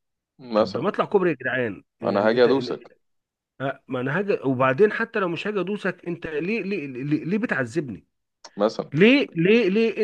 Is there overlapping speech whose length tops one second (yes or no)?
no